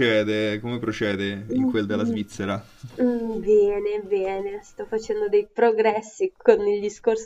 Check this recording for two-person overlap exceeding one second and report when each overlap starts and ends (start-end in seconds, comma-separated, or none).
none